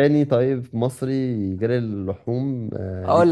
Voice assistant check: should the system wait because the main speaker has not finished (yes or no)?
no